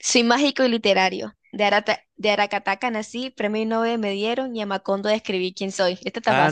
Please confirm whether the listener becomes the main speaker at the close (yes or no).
yes